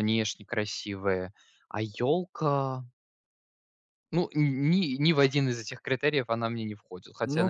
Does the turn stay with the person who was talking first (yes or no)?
no